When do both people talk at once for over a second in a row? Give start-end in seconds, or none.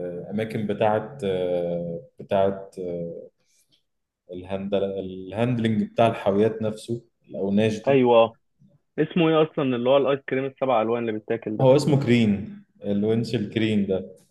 none